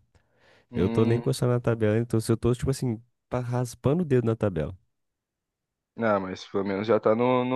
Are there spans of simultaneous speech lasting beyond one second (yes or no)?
no